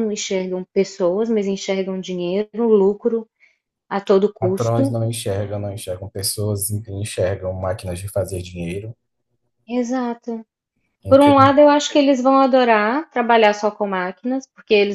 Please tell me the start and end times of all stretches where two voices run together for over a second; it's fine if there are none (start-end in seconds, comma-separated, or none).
none